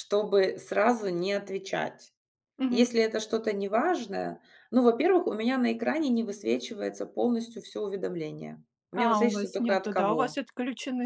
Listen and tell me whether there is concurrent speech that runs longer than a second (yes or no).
yes